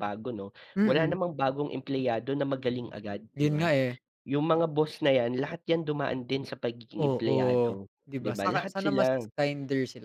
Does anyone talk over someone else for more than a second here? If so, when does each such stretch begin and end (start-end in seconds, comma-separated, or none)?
7.0-9.2